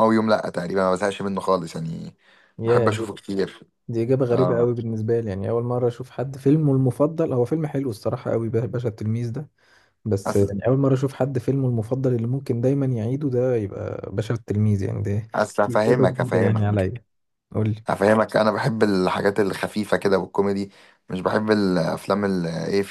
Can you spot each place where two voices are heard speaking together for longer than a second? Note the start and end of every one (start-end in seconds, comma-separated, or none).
15.7-16.9